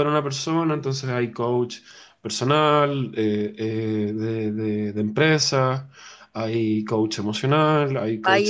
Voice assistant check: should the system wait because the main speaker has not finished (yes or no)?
no